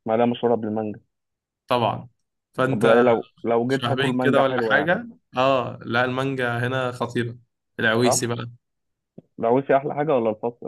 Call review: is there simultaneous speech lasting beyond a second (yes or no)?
yes